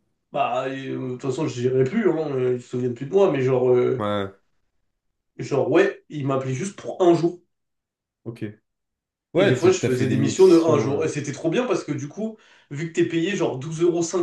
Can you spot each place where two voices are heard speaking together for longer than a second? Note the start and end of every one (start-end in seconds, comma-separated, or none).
9.3-11.1